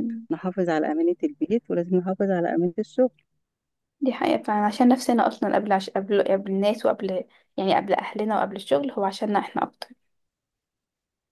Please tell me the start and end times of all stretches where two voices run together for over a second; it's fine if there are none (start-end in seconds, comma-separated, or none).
none